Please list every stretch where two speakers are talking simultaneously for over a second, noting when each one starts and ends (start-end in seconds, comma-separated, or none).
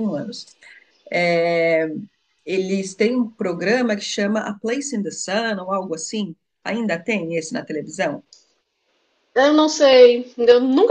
none